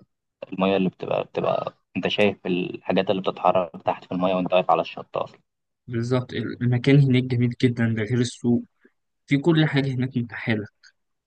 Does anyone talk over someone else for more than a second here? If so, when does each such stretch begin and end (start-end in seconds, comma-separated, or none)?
none